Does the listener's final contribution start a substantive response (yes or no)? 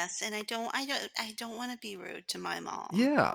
yes